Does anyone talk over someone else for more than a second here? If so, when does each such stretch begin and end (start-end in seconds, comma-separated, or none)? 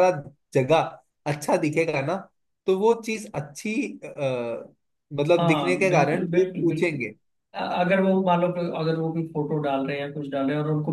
5.4-7.0